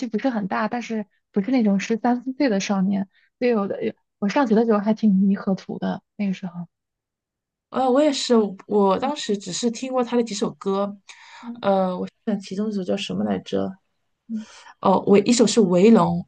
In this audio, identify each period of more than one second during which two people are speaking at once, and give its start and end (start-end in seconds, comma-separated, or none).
none